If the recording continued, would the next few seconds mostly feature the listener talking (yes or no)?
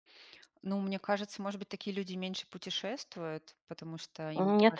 yes